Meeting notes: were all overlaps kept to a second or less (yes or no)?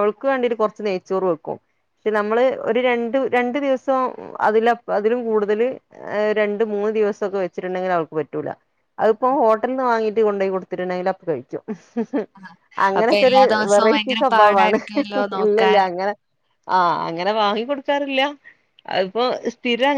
no